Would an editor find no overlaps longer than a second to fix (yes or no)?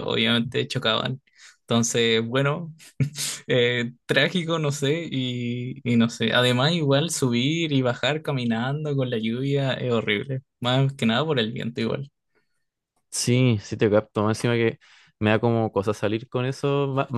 yes